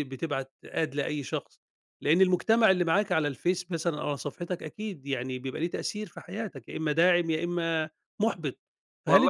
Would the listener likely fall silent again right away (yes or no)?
yes